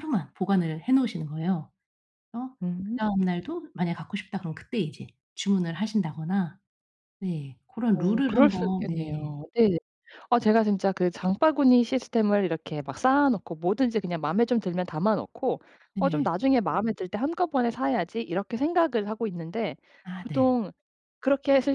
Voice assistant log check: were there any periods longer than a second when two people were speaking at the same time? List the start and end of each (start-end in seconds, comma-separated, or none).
7.9-9.3